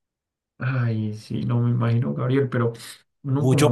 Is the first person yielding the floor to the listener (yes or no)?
yes